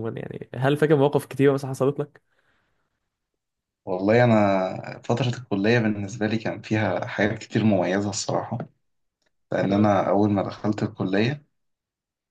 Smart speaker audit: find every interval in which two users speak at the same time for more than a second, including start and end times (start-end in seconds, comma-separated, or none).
none